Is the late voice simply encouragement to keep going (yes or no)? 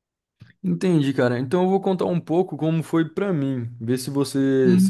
no